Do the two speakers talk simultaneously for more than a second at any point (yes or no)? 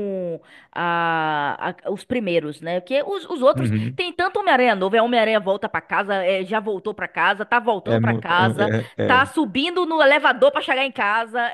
yes